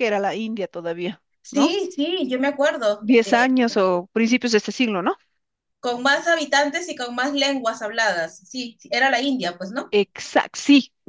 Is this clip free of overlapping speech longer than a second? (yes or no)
yes